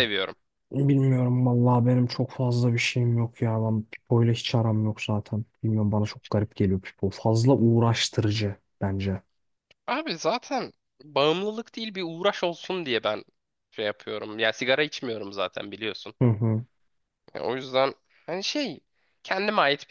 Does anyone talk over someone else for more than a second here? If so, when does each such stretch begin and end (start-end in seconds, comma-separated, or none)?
none